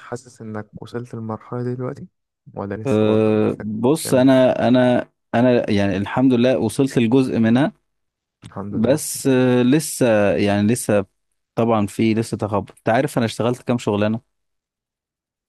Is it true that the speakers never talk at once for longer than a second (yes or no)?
no